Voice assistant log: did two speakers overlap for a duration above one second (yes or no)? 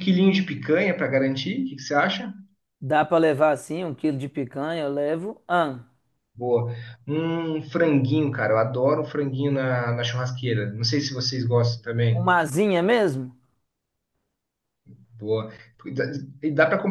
no